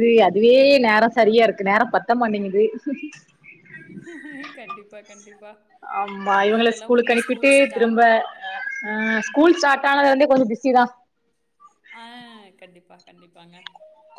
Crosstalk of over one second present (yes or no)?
yes